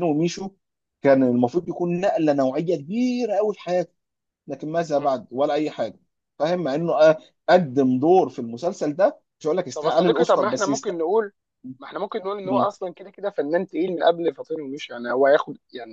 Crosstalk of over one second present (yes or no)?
yes